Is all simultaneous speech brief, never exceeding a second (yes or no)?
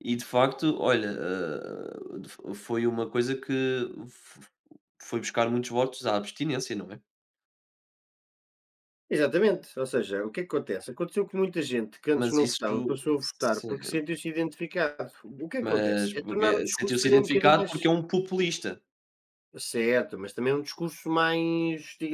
no